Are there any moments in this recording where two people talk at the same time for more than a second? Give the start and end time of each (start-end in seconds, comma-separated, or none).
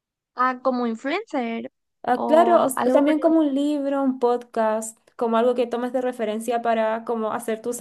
2.1-3.4